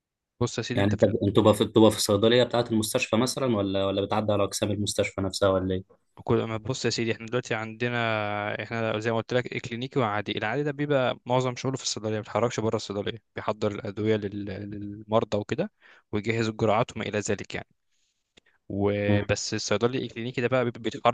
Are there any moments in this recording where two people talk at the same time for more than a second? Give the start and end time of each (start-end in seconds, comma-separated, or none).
none